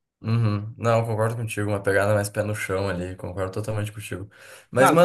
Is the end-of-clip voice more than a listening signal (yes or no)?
no